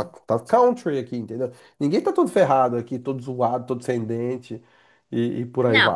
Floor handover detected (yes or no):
yes